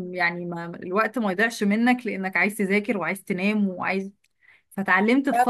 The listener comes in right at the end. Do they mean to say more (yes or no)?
no